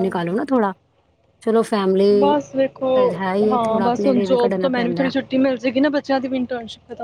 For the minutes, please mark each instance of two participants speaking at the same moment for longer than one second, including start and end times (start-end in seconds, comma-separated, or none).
3.5-5.1